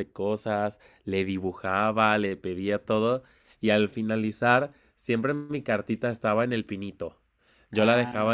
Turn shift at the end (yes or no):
no